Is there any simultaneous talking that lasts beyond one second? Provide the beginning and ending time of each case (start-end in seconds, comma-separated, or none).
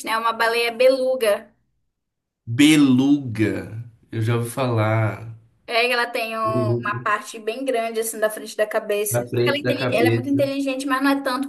9.1-10.5